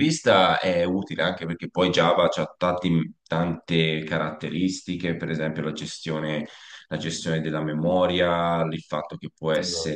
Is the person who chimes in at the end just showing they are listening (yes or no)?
yes